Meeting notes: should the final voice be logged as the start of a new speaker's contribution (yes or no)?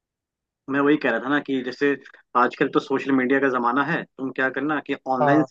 no